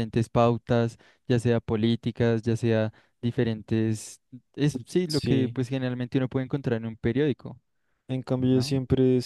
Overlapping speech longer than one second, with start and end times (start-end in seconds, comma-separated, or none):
none